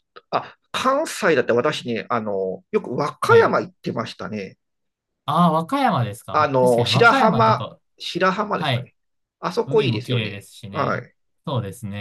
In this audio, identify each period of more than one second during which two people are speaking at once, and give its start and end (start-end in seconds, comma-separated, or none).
6.3-7.8, 9.6-11.0